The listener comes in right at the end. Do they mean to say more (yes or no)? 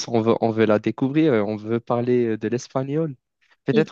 no